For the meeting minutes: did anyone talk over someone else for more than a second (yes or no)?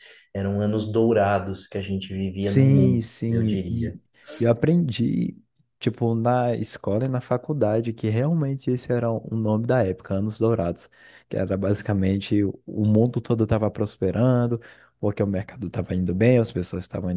yes